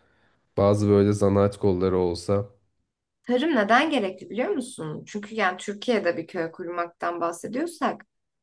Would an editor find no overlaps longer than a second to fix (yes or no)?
yes